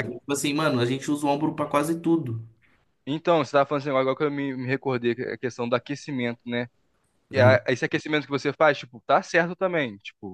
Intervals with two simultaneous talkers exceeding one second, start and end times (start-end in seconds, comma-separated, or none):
none